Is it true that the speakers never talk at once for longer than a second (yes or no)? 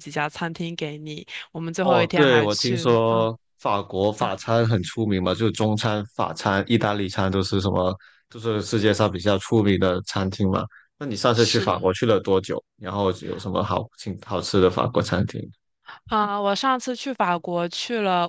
no